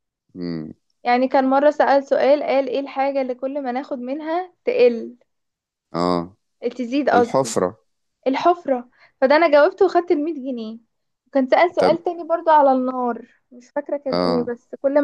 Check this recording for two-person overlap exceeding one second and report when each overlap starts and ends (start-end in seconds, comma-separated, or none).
none